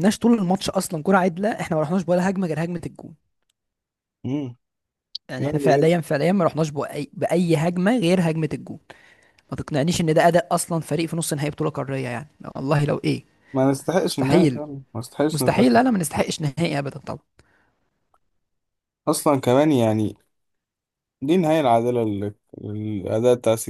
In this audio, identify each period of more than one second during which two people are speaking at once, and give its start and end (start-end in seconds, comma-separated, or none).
none